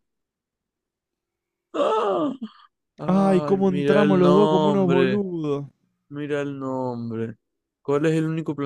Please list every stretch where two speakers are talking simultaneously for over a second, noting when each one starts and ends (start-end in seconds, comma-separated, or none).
3.1-5.2